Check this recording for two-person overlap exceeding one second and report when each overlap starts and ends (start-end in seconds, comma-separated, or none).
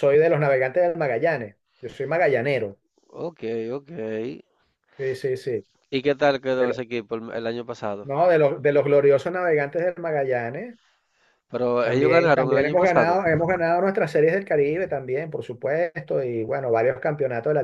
11.8-13.2